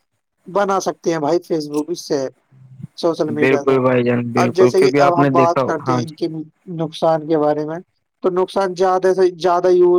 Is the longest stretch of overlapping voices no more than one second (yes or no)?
no